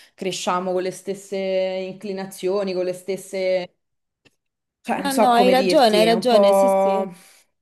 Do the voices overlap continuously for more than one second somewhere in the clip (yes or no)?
yes